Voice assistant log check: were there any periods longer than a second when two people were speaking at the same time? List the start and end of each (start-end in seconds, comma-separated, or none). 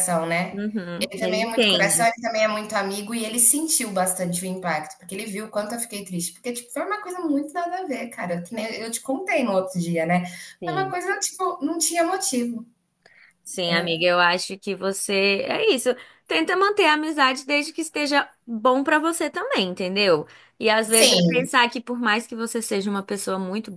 0.5-2.1